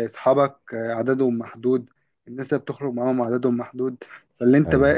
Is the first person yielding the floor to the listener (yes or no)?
no